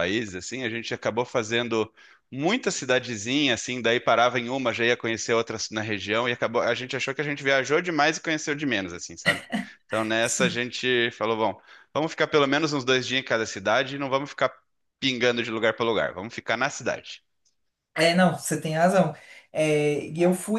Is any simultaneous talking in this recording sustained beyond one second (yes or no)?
no